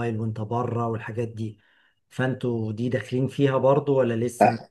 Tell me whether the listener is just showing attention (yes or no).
no